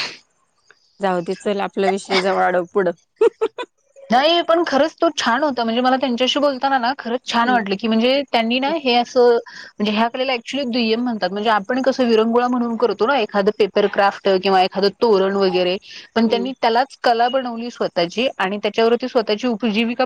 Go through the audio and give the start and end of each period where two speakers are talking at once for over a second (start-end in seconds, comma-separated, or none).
none